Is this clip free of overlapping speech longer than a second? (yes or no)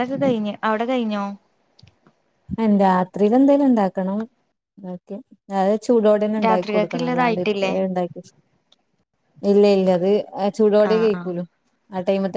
no